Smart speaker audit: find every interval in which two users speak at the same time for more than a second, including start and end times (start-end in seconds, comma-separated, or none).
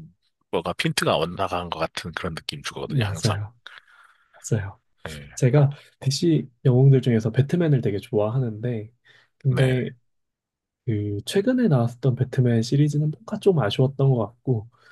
none